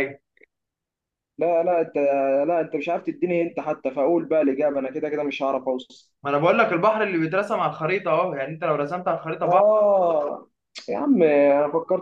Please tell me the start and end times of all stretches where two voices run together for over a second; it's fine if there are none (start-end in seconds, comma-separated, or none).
none